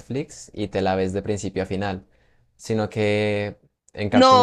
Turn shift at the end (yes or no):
yes